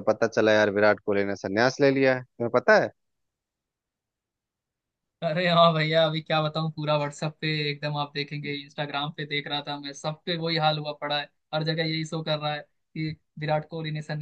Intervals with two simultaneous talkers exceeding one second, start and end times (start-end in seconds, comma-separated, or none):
none